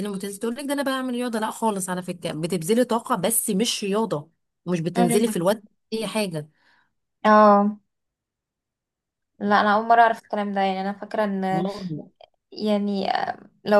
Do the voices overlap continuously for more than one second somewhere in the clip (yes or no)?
no